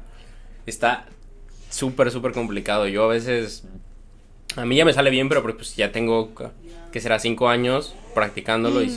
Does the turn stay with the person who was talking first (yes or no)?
yes